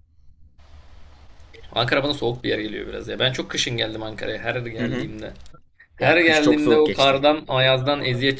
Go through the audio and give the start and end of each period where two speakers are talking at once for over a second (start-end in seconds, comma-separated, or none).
6.0-7.2